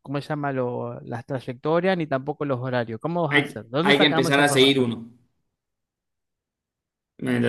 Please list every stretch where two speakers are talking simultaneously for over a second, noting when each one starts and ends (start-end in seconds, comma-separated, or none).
3.3-4.9